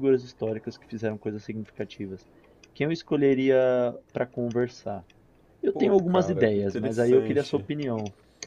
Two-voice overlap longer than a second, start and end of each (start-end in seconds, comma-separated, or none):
5.7-7.7